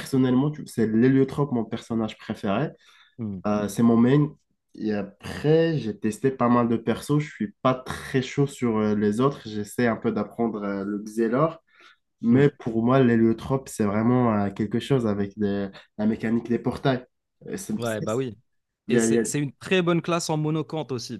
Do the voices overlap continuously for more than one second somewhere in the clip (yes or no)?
no